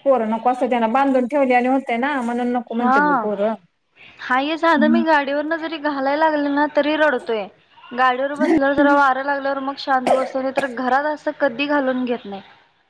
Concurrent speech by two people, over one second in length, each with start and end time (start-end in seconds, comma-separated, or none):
none